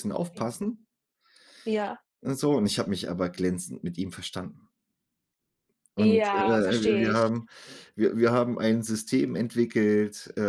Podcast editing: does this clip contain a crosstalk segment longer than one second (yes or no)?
yes